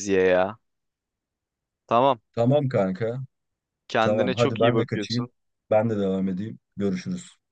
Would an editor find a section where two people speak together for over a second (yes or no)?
yes